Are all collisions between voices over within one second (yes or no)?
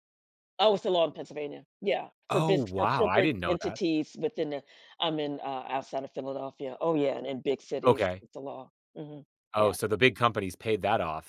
no